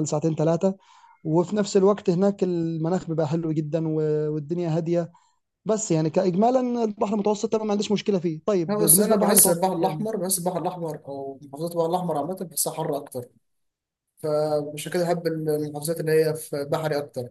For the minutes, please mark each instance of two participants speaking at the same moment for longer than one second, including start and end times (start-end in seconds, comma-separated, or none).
8.7-10.1